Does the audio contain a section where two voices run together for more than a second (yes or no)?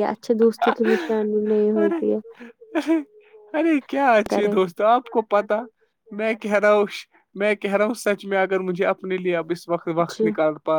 no